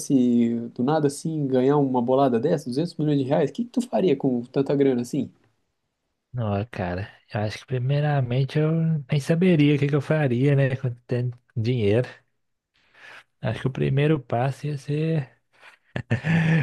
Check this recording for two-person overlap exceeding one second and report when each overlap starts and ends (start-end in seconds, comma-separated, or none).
none